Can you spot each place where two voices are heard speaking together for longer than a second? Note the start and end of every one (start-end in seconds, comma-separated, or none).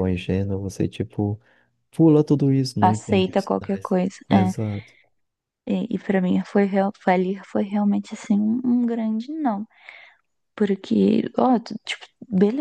2.8-4.5